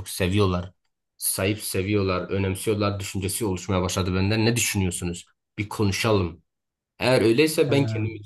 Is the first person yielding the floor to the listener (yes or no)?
no